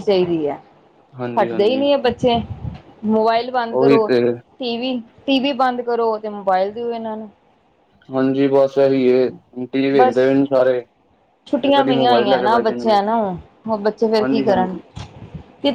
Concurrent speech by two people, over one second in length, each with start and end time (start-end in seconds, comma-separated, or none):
11.6-13.0